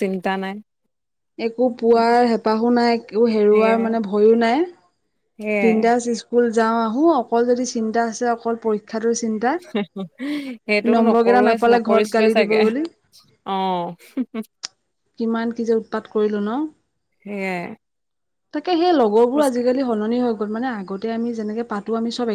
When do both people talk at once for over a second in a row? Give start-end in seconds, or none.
10.9-12.6